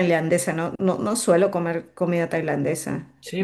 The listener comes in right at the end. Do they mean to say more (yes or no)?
yes